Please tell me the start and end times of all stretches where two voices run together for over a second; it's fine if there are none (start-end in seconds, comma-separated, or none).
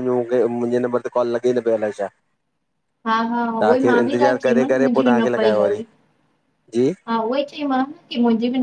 3.6-5.8